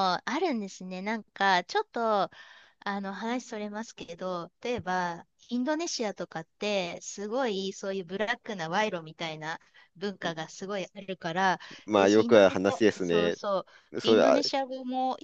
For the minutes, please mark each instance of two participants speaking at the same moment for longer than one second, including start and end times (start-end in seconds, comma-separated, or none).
11.9-13.4